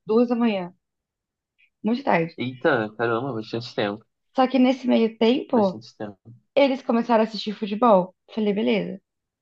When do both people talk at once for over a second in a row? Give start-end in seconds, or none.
none